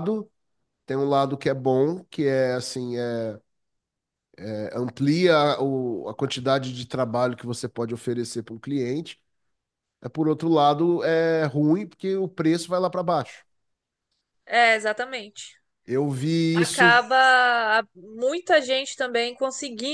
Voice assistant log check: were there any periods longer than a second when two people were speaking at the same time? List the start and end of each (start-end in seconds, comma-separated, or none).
none